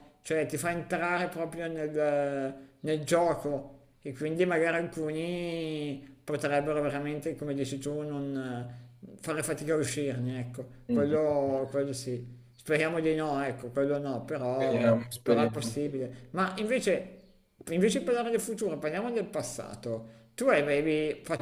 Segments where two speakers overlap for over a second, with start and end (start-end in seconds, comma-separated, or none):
14.6-15.8